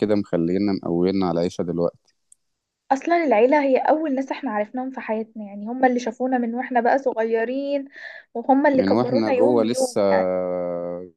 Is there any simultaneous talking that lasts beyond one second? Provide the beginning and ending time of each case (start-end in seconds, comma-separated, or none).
8.7-10.0